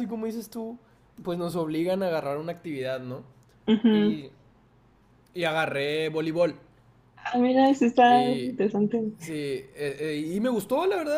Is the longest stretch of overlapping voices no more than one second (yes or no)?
yes